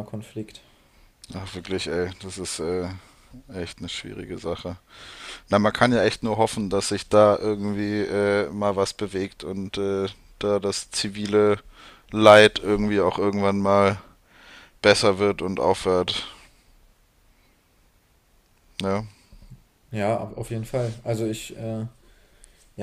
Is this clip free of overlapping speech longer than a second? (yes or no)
yes